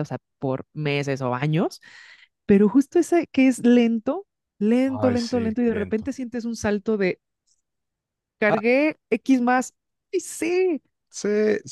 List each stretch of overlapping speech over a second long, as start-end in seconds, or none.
4.9-6.1